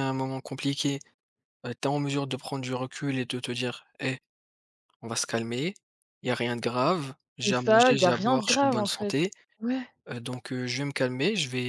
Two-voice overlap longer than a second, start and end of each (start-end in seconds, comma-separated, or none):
7.4-9.2